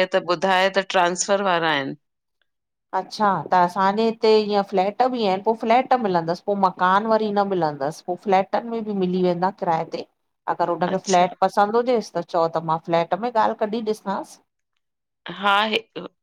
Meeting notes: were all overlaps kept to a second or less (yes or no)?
yes